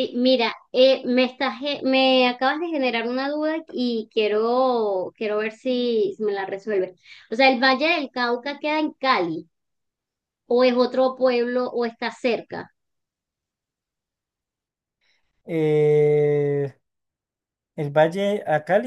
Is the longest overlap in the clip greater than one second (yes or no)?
no